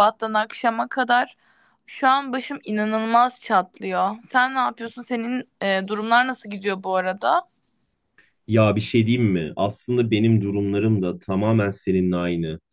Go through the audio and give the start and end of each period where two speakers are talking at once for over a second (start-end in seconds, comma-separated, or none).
none